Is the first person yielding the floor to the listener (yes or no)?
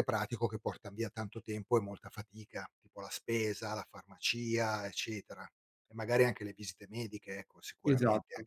yes